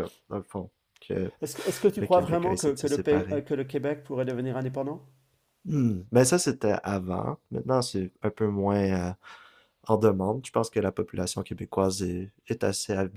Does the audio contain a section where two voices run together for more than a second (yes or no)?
yes